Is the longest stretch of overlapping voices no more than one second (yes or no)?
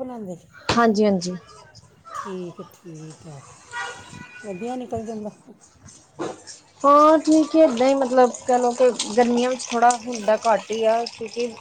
yes